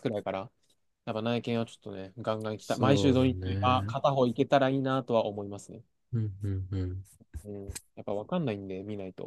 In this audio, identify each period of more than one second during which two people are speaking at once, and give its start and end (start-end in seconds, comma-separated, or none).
2.6-3.9